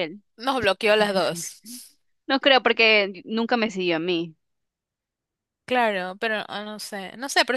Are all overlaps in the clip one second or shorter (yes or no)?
yes